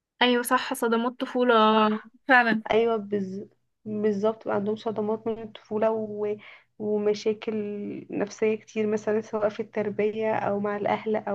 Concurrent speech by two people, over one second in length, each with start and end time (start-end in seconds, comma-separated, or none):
none